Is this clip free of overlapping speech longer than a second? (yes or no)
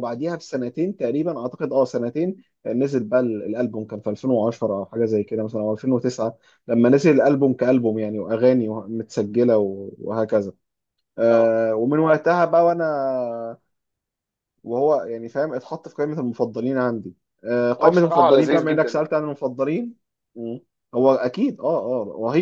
no